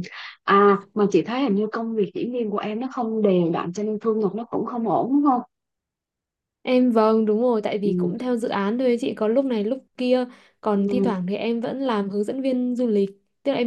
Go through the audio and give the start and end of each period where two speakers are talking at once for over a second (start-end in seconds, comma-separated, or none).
none